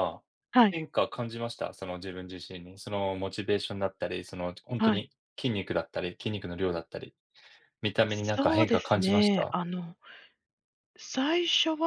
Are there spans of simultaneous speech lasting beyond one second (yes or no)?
yes